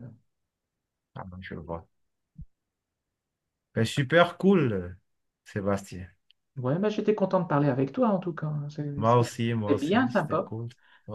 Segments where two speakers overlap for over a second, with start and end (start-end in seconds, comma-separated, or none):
9.0-10.5